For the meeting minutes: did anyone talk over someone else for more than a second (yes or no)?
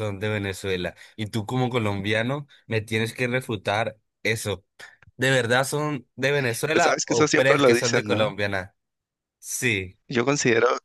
yes